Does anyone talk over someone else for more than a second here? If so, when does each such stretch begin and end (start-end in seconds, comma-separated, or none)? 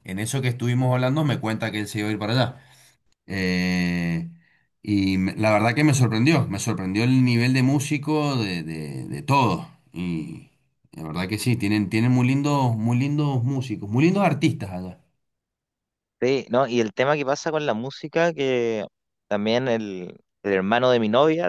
none